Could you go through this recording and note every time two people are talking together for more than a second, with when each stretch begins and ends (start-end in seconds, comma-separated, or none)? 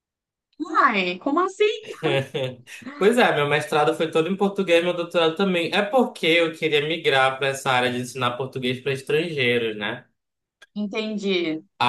none